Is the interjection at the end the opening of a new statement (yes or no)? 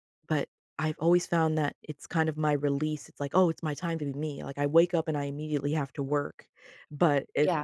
no